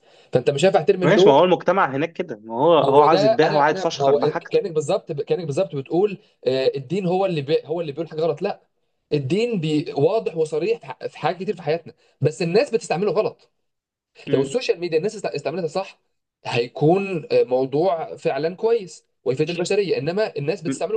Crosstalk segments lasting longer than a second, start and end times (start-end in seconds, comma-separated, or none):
2.9-4.6